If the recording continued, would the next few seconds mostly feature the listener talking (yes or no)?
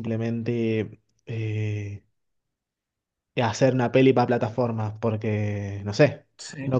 yes